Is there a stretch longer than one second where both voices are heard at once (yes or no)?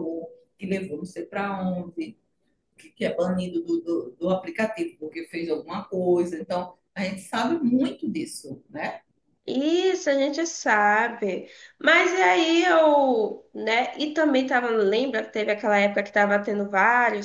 no